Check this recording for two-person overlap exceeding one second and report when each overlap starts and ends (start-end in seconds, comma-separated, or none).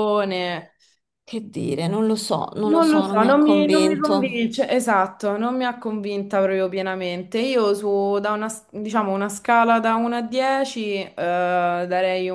2.6-4.5